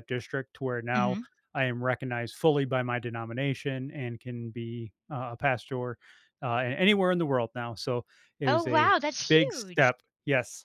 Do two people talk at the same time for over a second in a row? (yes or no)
yes